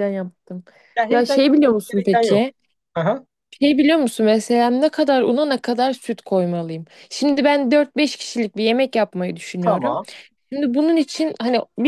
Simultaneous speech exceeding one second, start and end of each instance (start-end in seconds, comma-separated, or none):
1.1-2.5